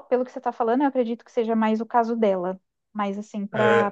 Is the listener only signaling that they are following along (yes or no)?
yes